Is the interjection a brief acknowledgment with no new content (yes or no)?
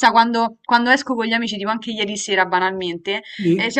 yes